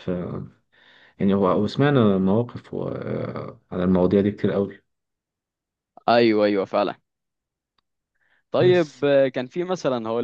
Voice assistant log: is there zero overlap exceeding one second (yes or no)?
yes